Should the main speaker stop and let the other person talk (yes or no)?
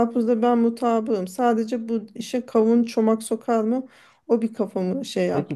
yes